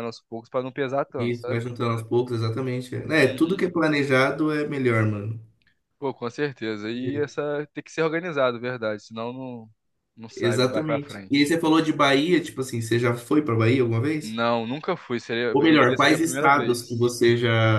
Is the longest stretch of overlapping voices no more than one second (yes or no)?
no